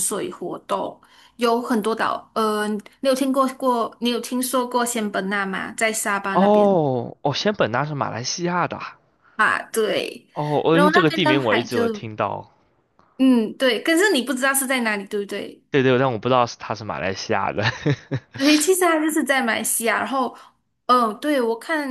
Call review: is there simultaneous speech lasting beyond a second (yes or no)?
yes